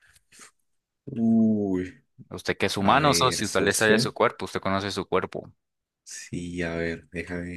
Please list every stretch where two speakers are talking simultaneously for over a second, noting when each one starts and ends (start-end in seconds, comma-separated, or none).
2.8-4.1